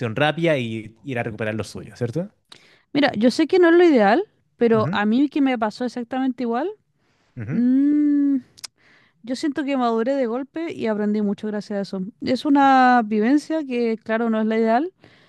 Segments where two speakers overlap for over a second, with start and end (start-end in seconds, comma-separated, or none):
none